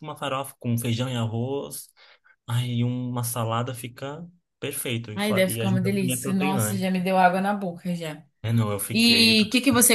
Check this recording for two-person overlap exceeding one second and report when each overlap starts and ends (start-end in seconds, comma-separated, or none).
5.1-6.9